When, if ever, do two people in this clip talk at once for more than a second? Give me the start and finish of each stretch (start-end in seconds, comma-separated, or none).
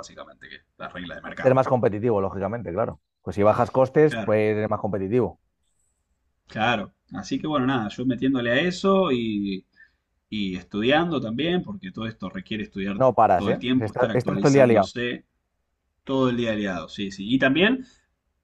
12.9-14.9